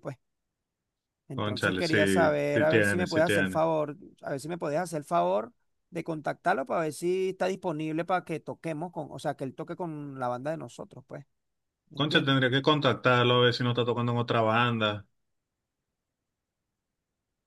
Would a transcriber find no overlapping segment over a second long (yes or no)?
no